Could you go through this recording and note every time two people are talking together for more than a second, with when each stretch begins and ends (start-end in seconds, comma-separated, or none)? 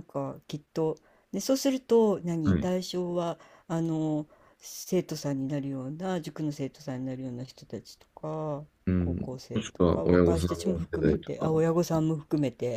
8.8-11.5